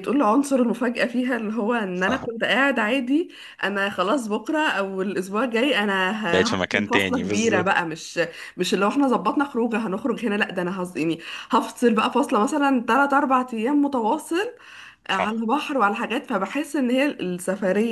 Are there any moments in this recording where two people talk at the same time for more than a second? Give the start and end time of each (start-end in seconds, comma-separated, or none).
6.3-7.8